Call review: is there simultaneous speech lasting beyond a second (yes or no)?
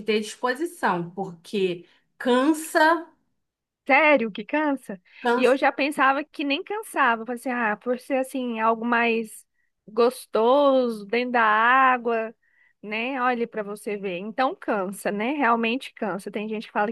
no